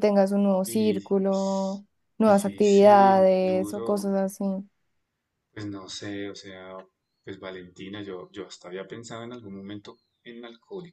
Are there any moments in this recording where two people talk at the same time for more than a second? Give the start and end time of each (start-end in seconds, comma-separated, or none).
2.2-4.1